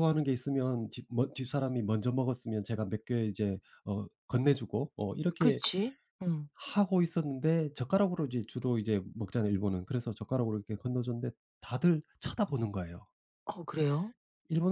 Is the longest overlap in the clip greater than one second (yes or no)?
no